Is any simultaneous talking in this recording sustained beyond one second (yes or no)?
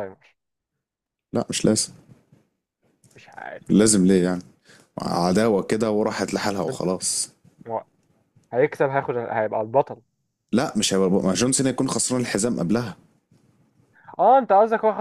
no